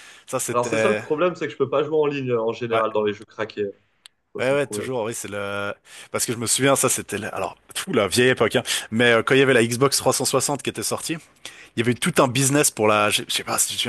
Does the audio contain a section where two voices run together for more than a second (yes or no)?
no